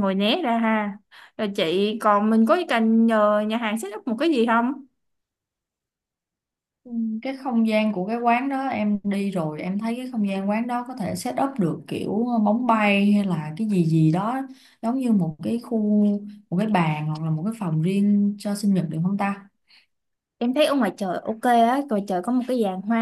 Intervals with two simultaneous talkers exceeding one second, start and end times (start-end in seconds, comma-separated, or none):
none